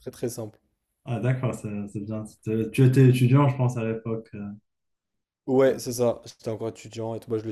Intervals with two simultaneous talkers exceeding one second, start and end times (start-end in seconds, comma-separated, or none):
none